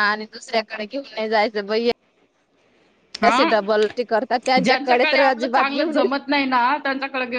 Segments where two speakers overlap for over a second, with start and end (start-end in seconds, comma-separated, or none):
4.6-6.0